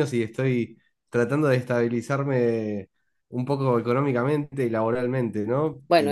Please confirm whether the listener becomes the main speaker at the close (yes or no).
yes